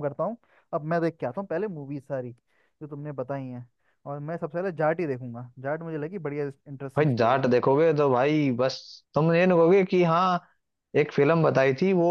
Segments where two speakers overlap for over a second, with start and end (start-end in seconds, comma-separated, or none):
none